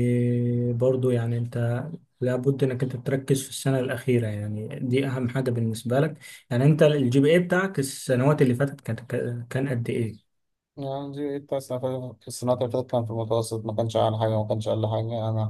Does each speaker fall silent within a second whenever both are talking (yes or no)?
yes